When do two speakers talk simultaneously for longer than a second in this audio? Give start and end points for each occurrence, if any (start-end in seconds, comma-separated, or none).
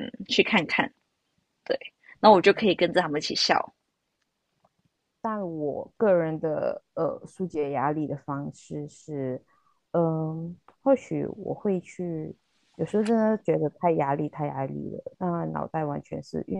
none